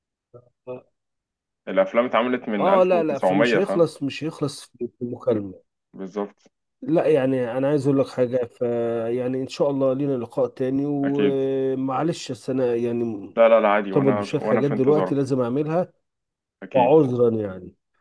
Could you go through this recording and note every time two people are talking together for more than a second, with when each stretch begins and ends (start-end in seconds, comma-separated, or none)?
2.6-3.9, 13.8-15.2